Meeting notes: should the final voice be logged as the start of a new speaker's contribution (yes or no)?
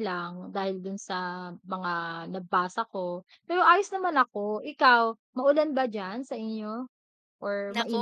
yes